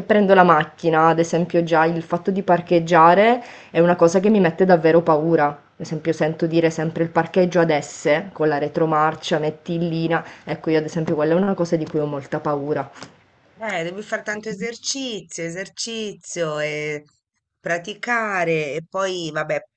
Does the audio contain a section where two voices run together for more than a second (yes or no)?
no